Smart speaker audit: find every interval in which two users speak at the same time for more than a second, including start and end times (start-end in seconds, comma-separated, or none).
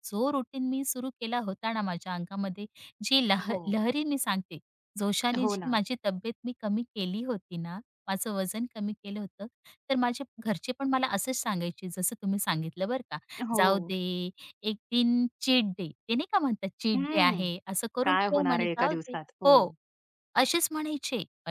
18.0-19.5